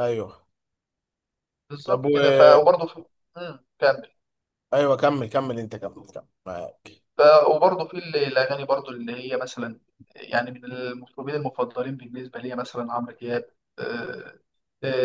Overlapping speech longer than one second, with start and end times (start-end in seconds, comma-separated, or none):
none